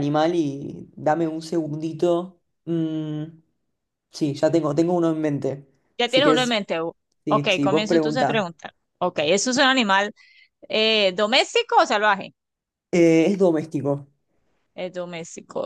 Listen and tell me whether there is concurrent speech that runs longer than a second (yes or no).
yes